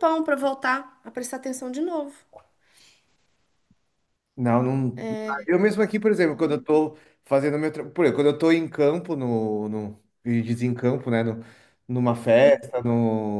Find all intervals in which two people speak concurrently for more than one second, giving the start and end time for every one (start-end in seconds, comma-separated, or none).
none